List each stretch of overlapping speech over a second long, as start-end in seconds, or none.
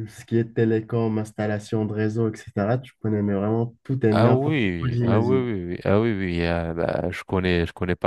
4.1-5.5